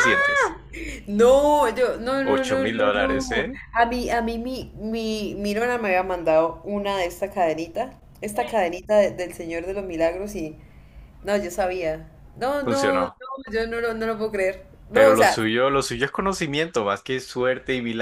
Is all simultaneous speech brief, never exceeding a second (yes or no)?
no